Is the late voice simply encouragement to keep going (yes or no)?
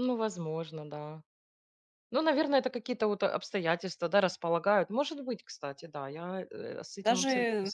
no